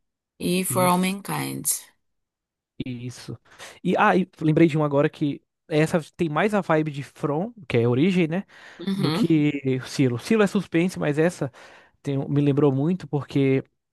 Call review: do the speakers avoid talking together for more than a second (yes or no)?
yes